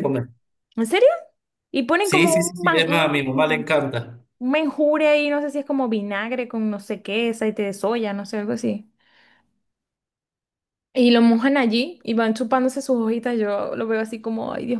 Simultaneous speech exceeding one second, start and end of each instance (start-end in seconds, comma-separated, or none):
2.0-3.7